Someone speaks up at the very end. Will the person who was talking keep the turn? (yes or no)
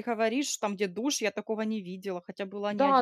no